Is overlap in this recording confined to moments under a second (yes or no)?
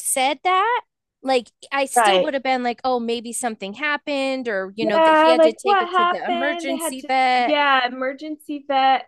no